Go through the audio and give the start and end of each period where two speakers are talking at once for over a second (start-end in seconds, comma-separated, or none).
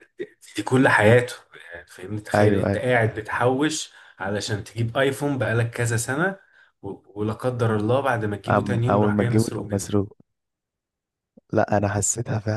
8.5-9.9